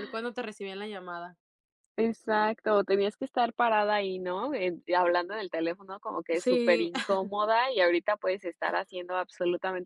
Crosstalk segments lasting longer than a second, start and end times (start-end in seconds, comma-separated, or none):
none